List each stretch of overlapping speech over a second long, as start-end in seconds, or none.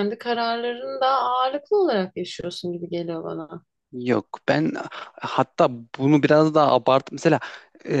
none